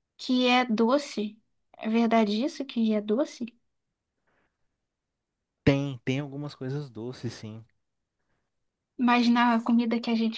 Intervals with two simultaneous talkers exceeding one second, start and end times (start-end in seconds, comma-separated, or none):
none